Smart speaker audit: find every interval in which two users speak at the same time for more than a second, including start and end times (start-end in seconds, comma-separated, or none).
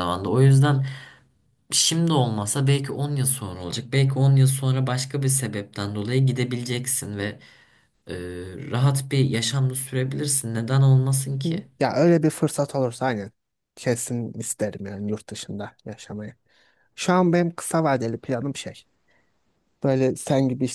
none